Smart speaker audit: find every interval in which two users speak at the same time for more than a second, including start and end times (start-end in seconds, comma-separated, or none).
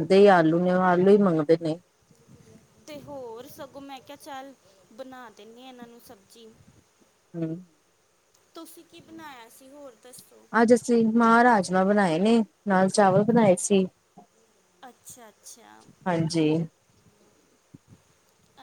none